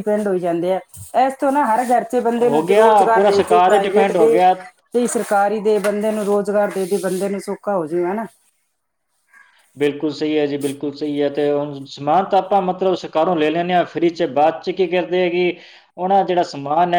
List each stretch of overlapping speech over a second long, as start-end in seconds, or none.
2.4-4.4